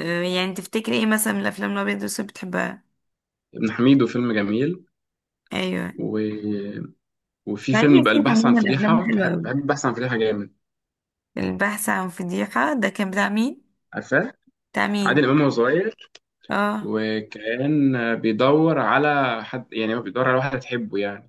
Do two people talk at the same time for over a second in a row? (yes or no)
yes